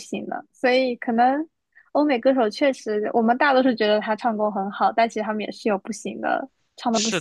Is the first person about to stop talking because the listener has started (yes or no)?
yes